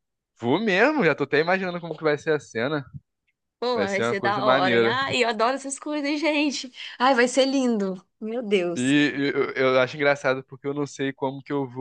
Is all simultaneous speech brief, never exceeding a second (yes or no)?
no